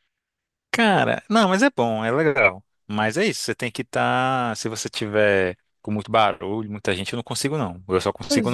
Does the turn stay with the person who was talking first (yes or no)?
yes